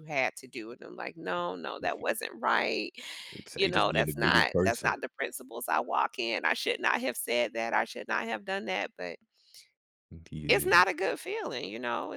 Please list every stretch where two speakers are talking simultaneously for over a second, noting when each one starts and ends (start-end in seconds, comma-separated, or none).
3.5-5.0